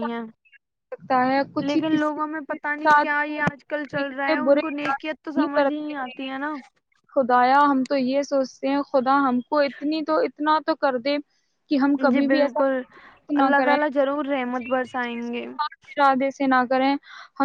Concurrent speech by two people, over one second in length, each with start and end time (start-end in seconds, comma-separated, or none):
1.7-6.3